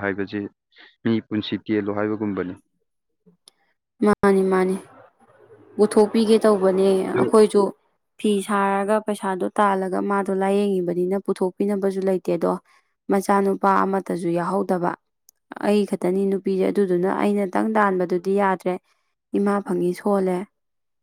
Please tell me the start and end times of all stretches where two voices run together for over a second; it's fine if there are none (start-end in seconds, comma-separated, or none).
none